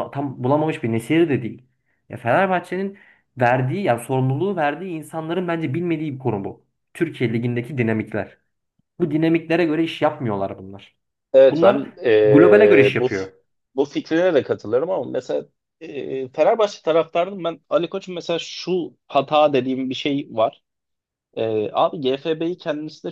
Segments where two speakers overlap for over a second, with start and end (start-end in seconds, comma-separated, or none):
11.5-13.1